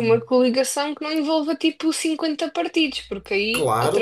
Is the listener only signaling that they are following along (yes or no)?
no